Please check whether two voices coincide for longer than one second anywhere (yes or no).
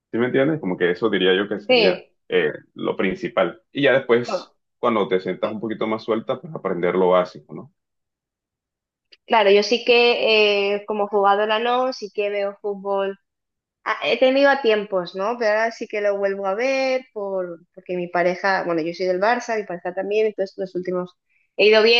no